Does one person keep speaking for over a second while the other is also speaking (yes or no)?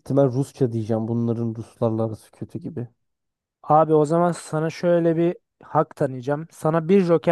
no